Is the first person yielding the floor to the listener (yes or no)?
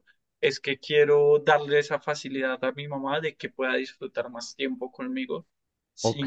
yes